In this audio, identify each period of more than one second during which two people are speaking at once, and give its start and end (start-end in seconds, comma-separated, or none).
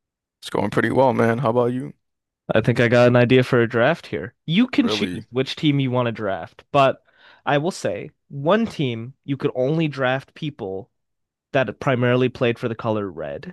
none